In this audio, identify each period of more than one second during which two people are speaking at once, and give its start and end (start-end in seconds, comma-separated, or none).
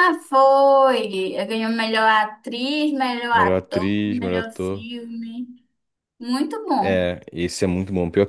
3.3-4.9